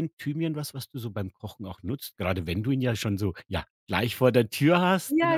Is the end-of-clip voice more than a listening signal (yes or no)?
yes